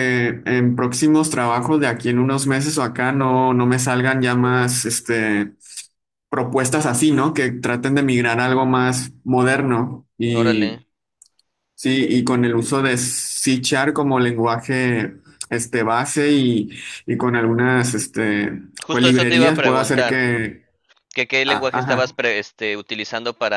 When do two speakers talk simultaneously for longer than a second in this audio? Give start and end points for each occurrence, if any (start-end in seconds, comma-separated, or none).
18.8-20.2